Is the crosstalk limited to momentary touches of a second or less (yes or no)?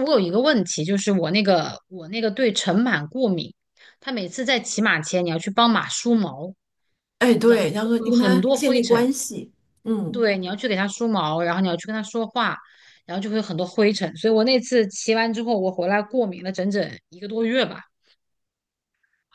no